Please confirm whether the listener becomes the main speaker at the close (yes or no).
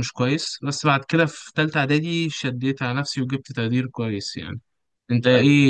no